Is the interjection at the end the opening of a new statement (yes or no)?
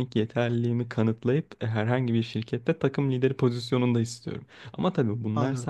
no